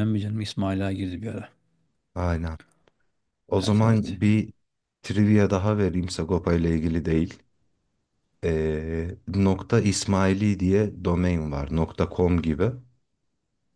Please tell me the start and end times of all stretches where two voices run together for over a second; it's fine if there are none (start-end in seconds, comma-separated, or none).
none